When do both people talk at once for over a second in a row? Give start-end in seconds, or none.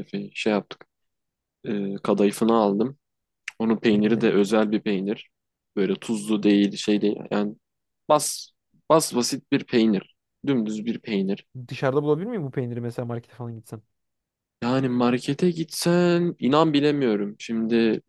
none